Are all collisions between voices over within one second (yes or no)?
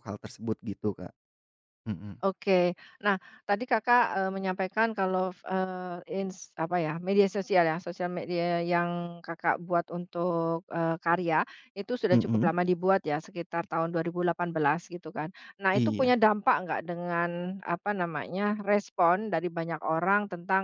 yes